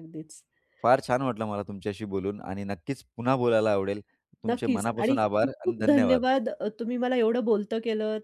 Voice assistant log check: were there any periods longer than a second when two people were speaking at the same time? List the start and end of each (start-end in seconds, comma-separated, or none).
4.5-6.2